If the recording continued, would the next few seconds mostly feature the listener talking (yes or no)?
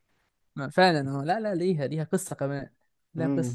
yes